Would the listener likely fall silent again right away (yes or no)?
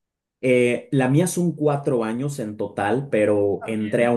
yes